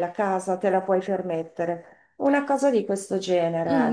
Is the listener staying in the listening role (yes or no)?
no